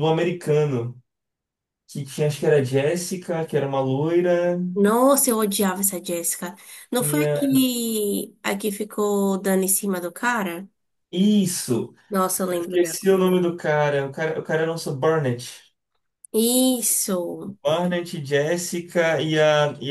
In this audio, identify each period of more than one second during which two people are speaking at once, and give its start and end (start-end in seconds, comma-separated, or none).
none